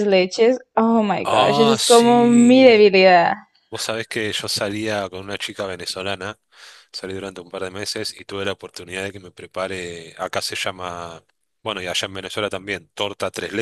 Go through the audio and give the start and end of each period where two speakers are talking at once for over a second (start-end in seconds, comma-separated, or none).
1.2-2.9